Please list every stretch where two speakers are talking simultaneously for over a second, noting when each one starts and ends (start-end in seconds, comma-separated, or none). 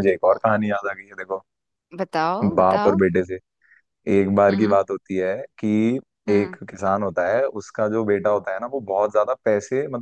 none